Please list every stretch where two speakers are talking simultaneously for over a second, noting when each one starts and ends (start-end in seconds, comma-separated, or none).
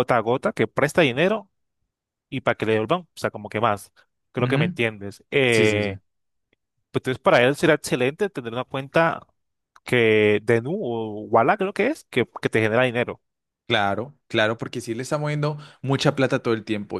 none